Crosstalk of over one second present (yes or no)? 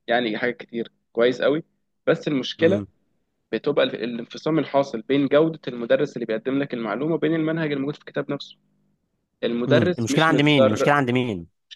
yes